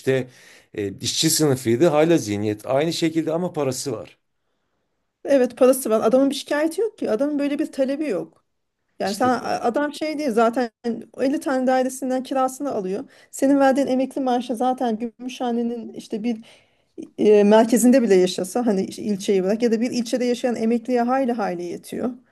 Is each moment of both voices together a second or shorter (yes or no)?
yes